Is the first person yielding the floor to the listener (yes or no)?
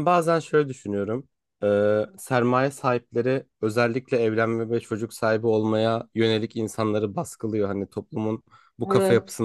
no